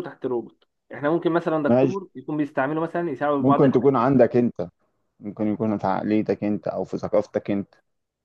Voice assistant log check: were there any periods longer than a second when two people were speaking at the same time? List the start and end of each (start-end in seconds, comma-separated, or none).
none